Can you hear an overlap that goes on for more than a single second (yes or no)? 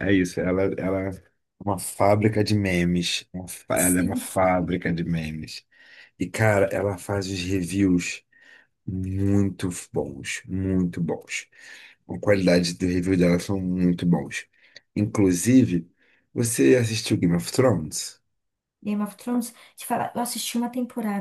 no